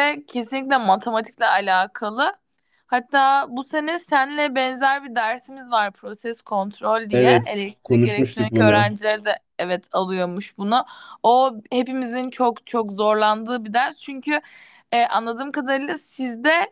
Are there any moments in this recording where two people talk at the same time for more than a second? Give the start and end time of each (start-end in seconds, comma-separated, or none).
7.1-8.9